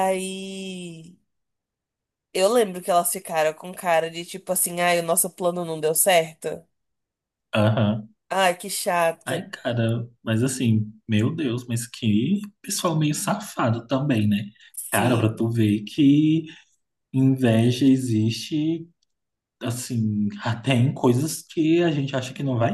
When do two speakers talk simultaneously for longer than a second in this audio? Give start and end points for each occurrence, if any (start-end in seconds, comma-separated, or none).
none